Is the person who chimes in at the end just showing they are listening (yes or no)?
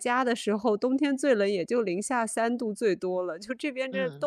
yes